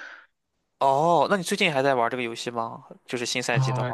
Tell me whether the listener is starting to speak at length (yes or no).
yes